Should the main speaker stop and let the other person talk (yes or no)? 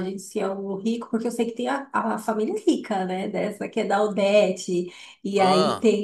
no